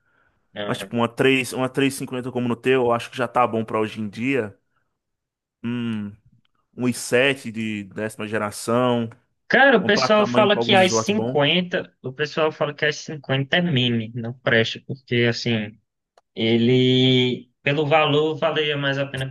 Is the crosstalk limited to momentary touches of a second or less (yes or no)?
no